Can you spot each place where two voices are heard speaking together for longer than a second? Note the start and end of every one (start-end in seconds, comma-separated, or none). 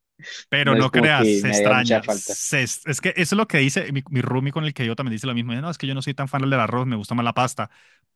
0.6-2.4